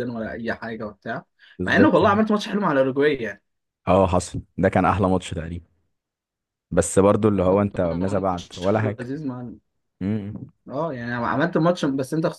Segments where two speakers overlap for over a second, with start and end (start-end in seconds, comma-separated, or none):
7.4-9.1